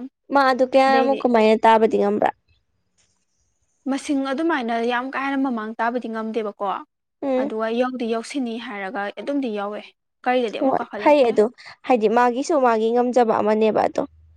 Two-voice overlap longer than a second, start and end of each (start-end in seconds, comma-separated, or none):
none